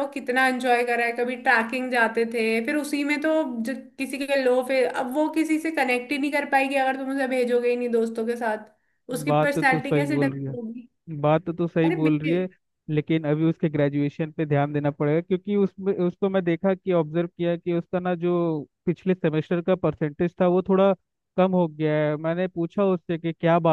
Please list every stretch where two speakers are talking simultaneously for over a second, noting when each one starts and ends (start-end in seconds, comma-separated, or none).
9.3-10.6